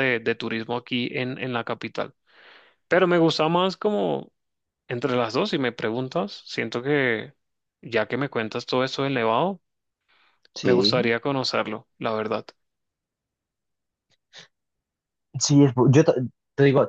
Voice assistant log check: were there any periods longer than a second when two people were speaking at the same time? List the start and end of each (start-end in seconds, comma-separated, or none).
none